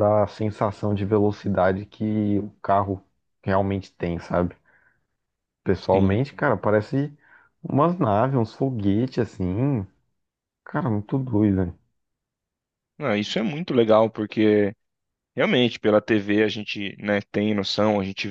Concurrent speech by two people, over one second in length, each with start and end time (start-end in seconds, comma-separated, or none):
none